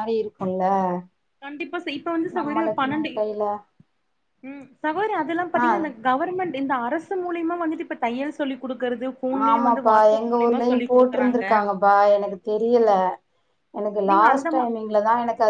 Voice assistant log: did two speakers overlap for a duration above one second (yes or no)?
yes